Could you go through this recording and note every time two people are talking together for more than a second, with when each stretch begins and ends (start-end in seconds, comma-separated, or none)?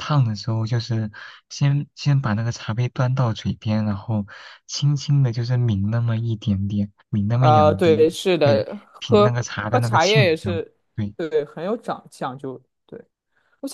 7.3-10.6